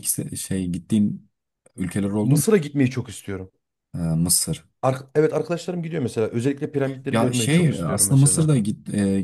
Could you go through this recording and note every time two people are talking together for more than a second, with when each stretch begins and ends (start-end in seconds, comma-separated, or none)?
7.1-8.5